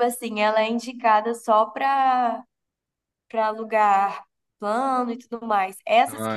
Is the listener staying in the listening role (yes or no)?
yes